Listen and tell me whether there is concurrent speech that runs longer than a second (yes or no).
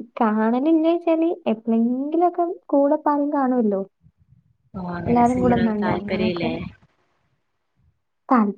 yes